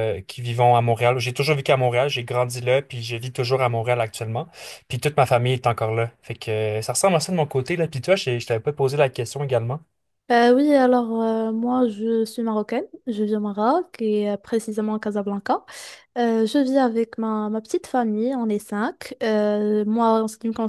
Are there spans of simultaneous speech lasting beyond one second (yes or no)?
no